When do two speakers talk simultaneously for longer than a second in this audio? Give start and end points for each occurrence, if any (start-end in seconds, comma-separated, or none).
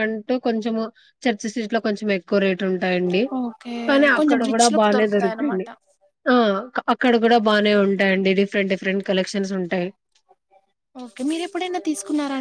4.2-5.7